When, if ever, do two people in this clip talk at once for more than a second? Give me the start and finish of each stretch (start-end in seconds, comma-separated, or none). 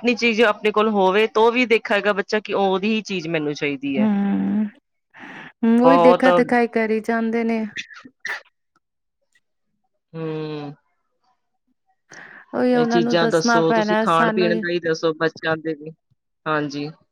12.8-14.5